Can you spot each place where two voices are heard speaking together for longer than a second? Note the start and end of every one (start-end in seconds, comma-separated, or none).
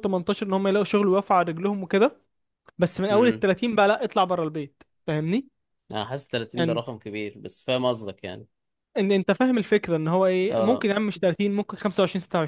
none